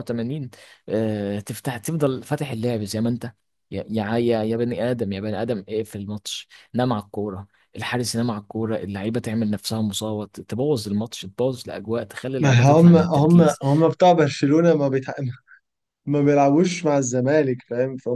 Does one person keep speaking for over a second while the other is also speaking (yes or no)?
yes